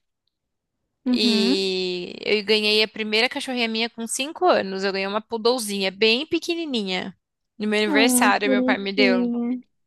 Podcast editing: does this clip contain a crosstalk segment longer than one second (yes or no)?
yes